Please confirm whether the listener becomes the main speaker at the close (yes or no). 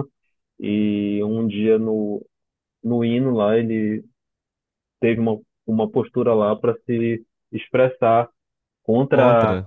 no